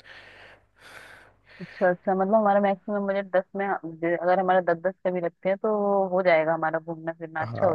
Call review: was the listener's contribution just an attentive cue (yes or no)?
no